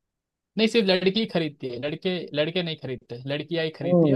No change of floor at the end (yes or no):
no